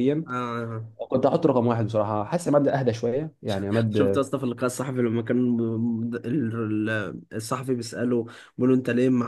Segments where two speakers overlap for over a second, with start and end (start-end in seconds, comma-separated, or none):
none